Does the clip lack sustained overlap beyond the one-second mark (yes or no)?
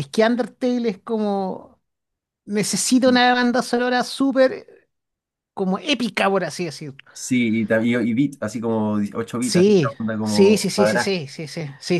no